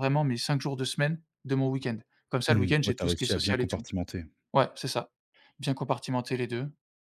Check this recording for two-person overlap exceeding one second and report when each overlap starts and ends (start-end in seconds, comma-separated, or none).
2.5-3.9